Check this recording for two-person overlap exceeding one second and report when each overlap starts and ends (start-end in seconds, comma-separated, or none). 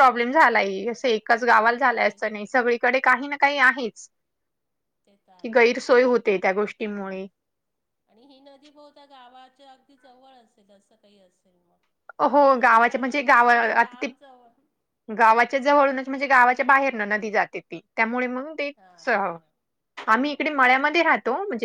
12.3-14.1